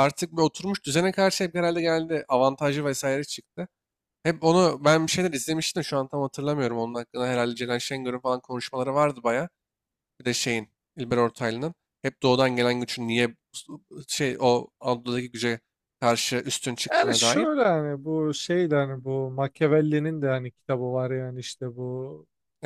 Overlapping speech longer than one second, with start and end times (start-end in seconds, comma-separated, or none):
none